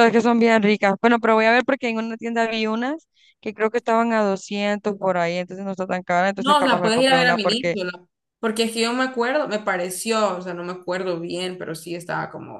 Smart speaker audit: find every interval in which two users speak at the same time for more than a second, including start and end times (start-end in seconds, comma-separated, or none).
6.4-7.8